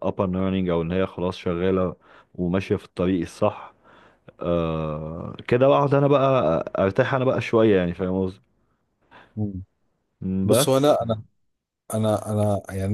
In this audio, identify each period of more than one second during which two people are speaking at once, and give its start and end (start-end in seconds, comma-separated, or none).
none